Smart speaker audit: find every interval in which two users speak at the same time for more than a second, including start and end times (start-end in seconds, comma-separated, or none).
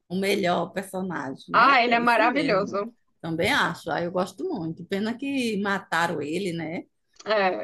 1.5-2.8